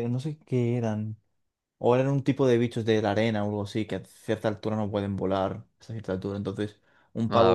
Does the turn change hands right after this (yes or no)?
no